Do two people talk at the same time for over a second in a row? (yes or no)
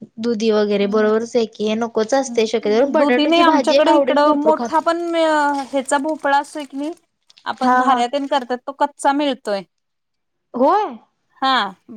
yes